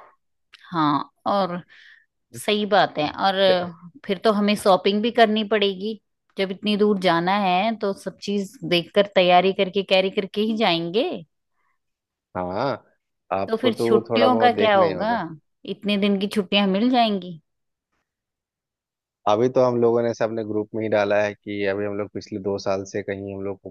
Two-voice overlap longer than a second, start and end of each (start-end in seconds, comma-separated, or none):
13.5-15.1